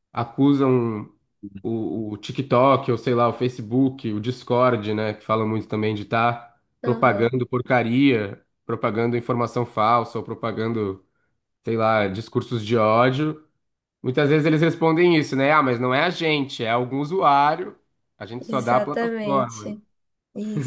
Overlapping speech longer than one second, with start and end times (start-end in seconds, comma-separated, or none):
18.4-19.7